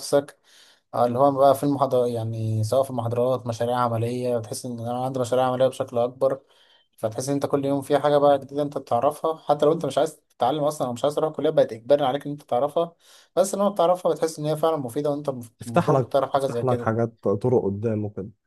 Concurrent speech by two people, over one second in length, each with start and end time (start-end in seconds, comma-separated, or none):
15.7-16.9